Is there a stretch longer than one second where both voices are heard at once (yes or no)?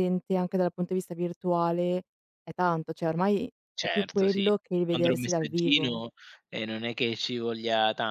yes